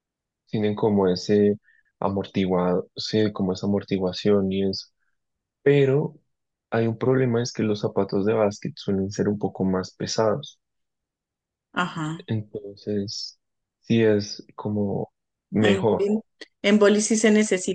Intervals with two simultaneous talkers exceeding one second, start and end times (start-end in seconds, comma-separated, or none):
none